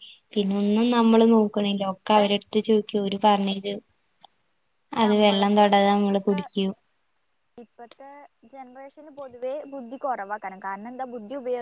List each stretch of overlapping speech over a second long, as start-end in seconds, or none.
none